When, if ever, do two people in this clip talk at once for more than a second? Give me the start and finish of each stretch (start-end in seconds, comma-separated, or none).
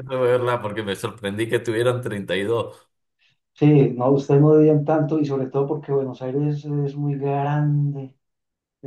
none